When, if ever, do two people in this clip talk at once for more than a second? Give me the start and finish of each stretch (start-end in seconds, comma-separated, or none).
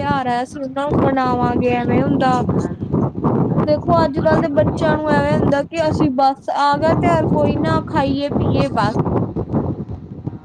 3.6-5.0